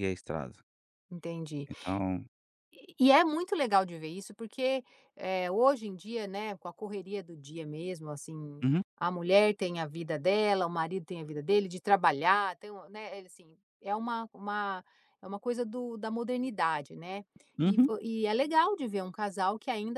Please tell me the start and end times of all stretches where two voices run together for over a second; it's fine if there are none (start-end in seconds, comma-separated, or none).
none